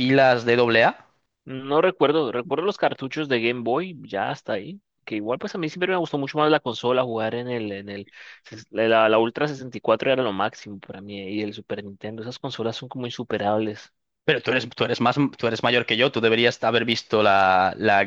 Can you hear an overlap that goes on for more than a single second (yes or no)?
no